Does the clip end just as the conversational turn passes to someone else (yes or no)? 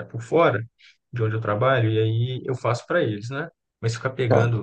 no